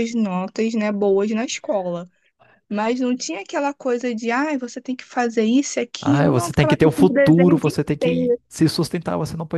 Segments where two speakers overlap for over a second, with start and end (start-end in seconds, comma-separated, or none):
6.0-8.4